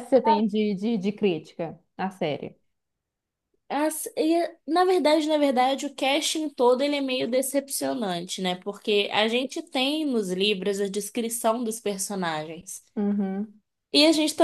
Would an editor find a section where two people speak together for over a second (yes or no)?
no